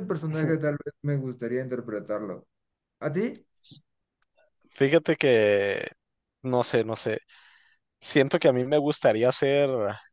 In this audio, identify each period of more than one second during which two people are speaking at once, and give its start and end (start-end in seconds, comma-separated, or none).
none